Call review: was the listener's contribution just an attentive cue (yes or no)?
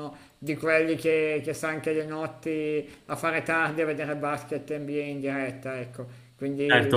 no